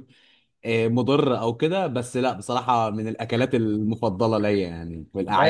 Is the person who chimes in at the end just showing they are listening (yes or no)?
no